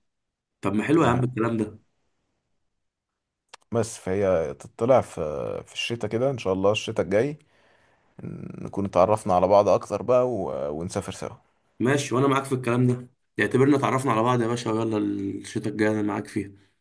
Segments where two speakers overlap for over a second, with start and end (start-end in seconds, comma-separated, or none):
none